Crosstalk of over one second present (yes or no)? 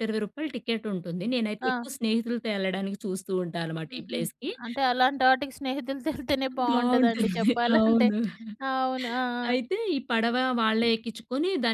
yes